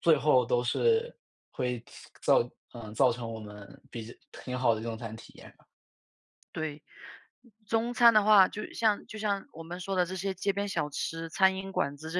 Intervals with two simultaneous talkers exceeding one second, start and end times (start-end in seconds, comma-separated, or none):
none